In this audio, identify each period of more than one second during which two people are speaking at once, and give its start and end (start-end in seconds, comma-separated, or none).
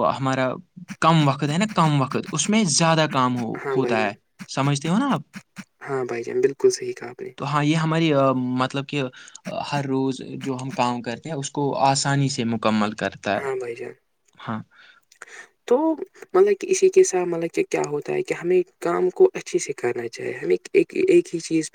none